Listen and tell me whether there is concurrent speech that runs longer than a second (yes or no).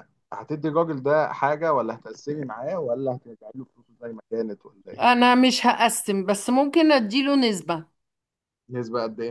no